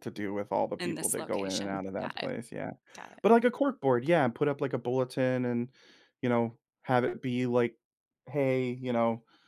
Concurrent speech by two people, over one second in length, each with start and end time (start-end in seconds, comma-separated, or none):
0.8-2.3